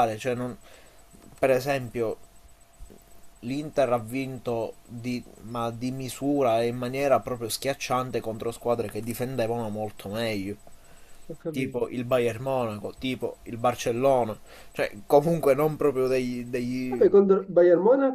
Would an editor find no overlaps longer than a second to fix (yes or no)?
yes